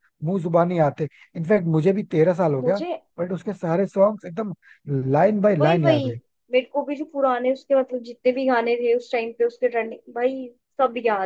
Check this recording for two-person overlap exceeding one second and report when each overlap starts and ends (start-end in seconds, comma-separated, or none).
none